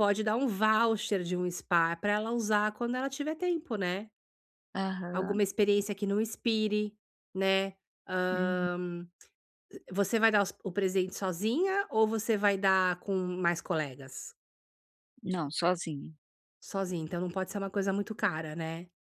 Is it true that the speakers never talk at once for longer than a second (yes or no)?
yes